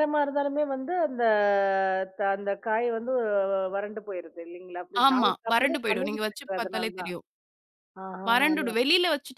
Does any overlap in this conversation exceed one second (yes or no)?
yes